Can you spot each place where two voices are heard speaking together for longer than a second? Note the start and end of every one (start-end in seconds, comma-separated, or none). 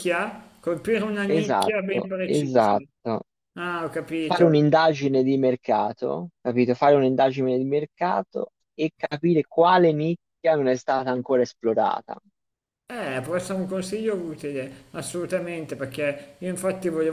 1.3-2.8